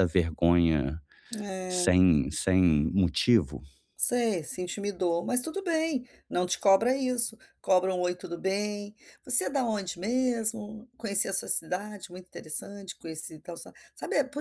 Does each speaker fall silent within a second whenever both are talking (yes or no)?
yes